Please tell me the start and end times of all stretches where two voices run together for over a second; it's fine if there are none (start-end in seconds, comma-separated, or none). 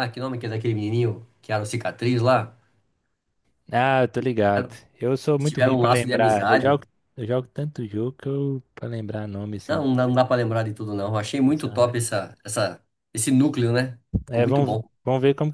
5.4-6.8